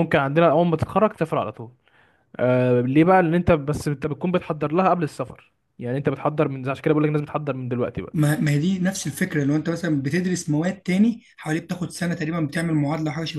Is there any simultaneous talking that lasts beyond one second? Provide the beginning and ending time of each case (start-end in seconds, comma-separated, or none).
none